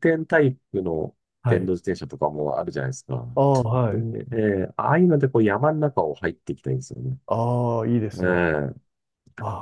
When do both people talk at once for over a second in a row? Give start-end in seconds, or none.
none